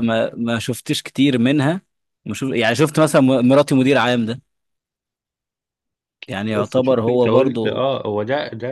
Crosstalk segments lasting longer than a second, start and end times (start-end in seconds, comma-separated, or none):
6.5-7.8